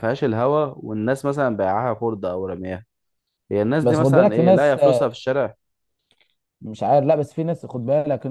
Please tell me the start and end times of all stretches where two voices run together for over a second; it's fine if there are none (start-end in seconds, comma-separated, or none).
3.8-5.1